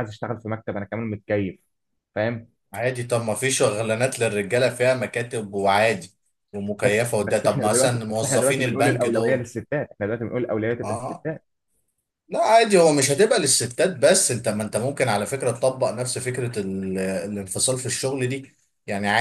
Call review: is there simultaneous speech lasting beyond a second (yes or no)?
yes